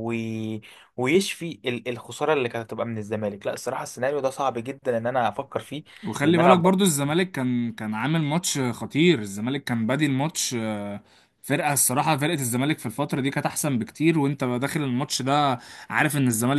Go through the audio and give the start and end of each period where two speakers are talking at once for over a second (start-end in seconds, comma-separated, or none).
none